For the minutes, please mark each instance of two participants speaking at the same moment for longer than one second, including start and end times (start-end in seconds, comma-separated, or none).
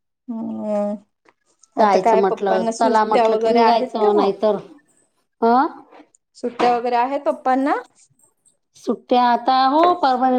1.8-4.3